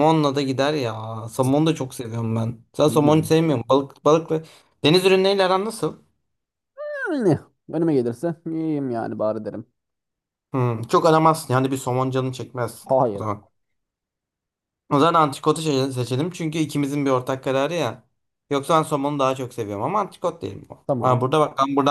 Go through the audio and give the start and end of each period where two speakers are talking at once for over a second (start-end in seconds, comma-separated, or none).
none